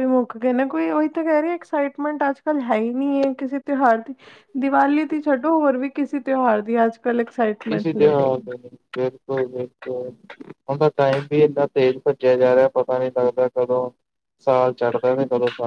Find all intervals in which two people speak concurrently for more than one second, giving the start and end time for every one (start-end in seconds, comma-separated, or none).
none